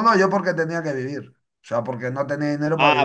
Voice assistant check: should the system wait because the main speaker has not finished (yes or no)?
no